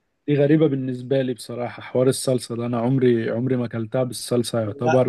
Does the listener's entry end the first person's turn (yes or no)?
no